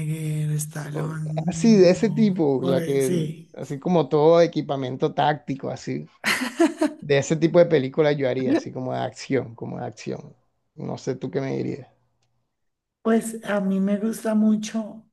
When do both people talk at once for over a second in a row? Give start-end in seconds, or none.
1.5-3.1